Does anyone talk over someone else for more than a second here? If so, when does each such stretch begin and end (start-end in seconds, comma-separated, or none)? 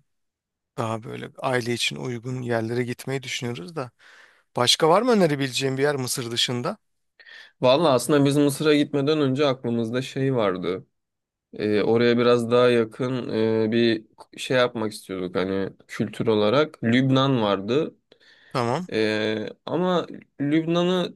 none